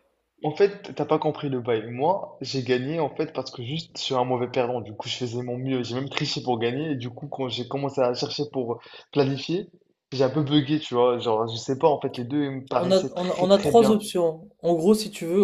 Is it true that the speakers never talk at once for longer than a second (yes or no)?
no